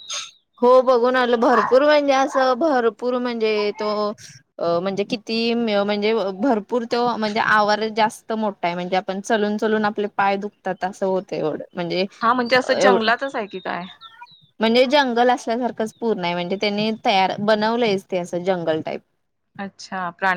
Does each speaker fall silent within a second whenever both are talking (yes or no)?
yes